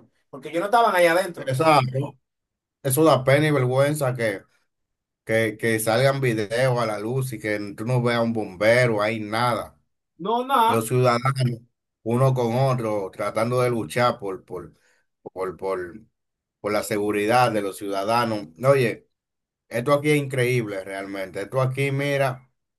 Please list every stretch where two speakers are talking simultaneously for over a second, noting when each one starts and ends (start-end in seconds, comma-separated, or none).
none